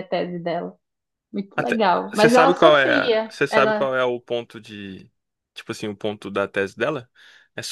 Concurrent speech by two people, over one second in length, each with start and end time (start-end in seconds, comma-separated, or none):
1.6-3.9